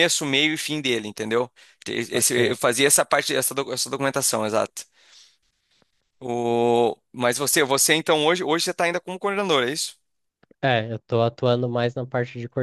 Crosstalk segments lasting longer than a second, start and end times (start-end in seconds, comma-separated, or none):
none